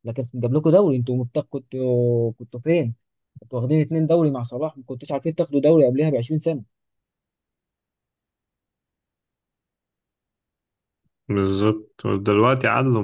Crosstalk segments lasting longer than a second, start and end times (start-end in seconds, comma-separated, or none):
none